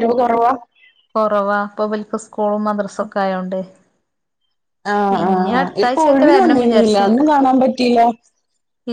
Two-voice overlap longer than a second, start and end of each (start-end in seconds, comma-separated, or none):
5.2-7.2